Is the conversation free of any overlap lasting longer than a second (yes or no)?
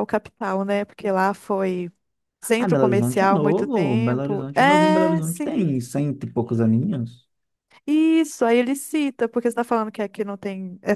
no